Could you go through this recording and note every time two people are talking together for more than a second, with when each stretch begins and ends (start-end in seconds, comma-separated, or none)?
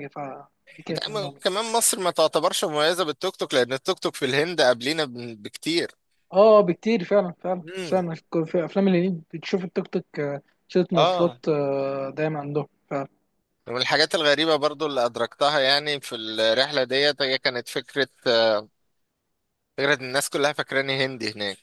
none